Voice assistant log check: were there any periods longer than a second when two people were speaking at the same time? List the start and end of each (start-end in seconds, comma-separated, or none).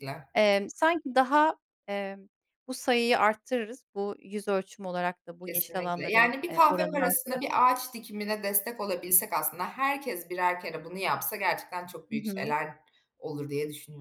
5.5-7.7